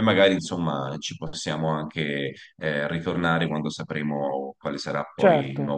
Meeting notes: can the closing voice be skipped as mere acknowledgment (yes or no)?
no